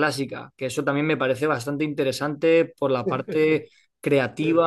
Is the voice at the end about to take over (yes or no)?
no